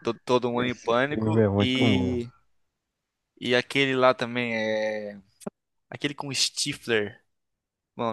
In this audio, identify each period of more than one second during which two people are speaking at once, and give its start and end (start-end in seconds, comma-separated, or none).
0.6-2.2